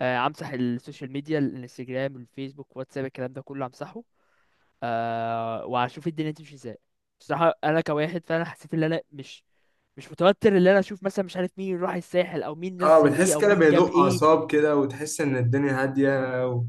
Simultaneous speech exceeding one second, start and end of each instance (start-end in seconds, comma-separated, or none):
12.8-14.2